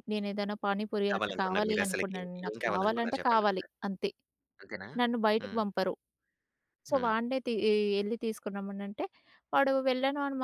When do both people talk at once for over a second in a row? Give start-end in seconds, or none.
1.1-3.7